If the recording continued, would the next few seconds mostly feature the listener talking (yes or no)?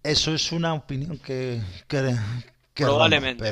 yes